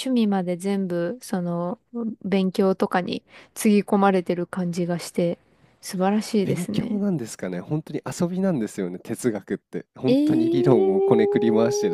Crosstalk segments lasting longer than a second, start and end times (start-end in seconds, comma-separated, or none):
10.1-11.3